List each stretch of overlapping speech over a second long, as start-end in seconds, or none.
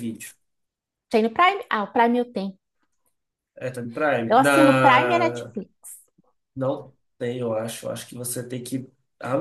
4.3-5.5